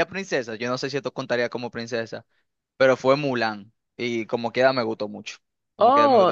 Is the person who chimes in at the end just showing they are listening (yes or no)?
no